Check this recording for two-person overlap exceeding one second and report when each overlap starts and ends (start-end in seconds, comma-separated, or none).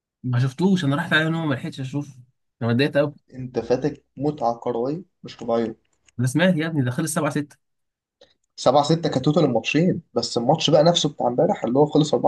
none